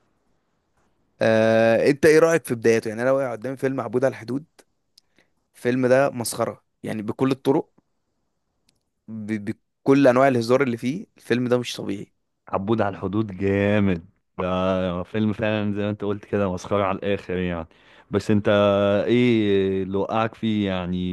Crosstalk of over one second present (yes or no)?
no